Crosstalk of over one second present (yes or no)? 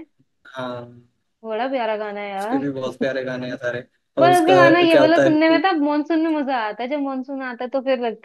yes